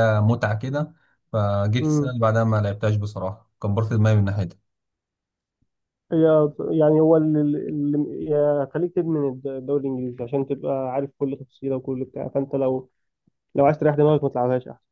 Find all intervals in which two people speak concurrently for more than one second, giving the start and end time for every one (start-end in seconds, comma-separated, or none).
none